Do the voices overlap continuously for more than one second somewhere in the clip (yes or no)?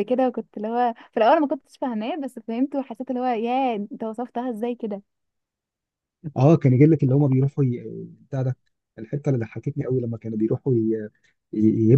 no